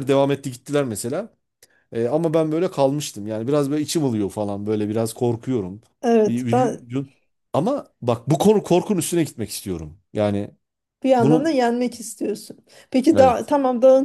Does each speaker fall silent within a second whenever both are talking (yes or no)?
yes